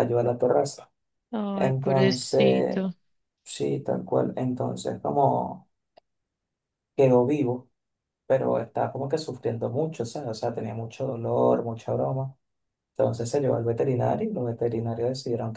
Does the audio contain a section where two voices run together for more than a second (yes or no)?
yes